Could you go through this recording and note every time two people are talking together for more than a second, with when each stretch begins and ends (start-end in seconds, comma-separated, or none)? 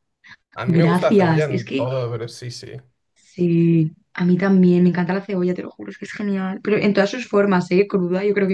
0.7-1.9